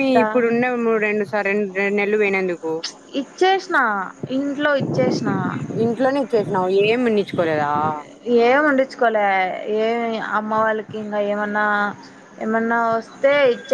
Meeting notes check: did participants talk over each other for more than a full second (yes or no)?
no